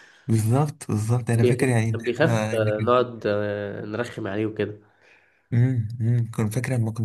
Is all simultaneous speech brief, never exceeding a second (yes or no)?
no